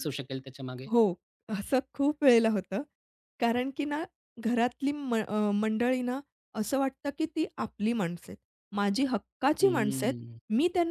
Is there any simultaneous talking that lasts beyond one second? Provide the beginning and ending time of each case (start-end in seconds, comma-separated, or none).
none